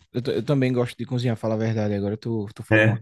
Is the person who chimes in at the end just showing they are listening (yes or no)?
yes